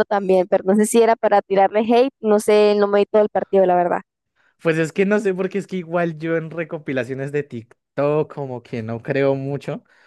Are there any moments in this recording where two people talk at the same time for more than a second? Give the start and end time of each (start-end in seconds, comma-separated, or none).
none